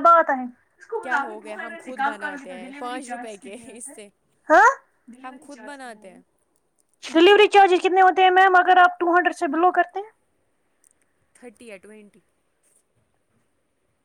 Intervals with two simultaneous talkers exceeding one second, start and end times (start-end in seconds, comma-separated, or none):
none